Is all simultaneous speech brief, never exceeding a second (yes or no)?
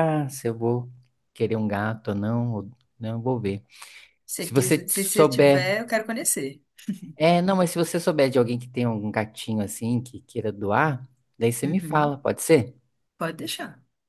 no